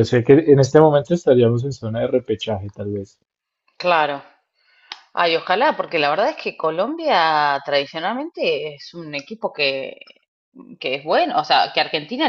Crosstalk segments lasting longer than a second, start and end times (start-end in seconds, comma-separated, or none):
none